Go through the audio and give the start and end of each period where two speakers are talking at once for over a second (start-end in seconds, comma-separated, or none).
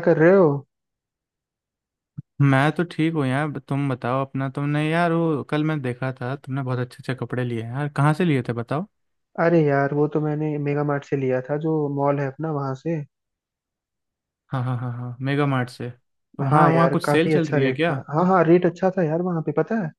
16.5-17.9